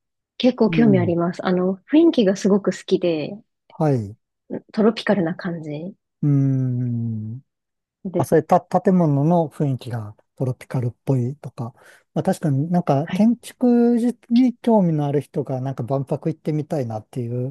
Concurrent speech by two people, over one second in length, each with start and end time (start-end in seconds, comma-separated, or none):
none